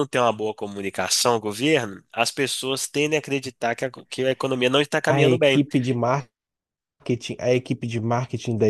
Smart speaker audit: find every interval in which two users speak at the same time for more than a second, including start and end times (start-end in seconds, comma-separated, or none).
none